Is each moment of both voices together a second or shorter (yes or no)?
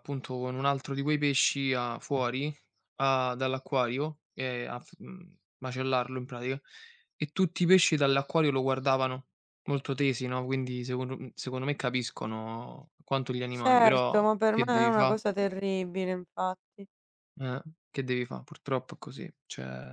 no